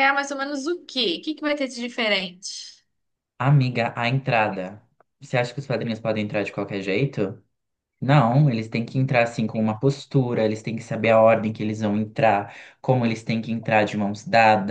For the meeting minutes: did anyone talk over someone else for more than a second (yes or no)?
no